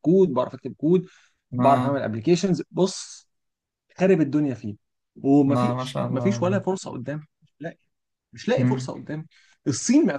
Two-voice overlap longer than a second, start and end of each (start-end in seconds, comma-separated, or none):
5.5-6.7